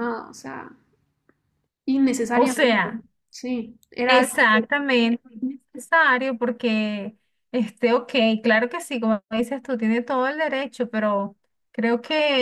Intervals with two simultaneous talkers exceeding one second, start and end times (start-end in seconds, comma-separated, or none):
none